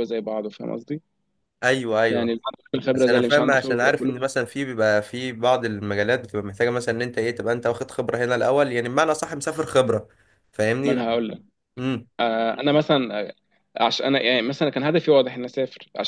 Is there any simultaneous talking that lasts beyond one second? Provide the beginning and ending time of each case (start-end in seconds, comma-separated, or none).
2.9-4.3